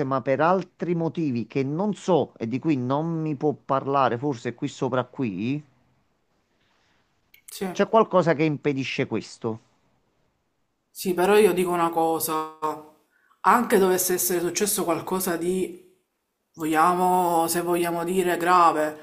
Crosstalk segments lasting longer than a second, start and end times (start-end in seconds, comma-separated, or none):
none